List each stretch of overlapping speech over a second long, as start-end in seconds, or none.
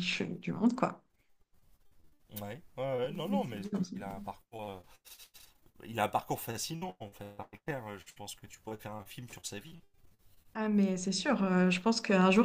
3.1-4.3